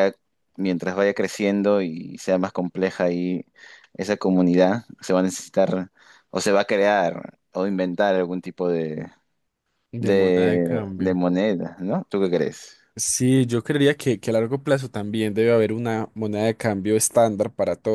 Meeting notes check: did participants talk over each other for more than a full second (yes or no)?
yes